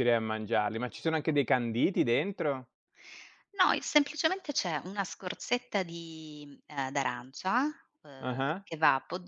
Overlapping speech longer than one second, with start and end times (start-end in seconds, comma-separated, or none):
none